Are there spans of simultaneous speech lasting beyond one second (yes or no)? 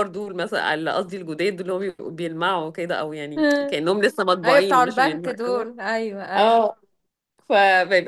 yes